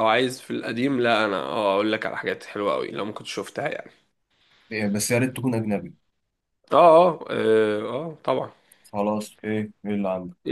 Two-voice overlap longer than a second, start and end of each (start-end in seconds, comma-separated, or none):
none